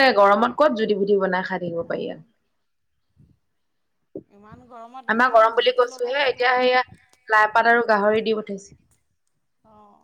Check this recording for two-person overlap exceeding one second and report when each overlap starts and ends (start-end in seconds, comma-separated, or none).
5.1-6.7